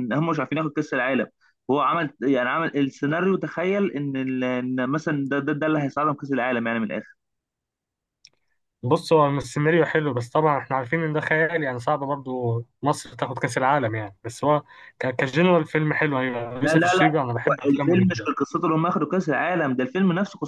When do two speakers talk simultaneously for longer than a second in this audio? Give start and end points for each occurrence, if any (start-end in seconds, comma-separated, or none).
16.6-18.3